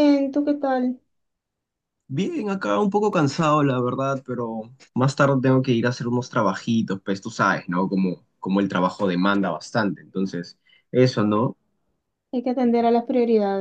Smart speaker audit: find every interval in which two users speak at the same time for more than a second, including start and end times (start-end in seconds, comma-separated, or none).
none